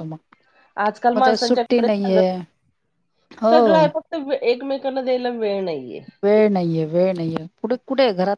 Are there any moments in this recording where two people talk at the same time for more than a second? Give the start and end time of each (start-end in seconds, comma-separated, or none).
none